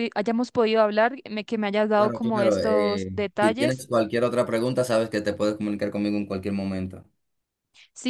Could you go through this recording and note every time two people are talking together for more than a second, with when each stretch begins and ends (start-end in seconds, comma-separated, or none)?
1.9-3.9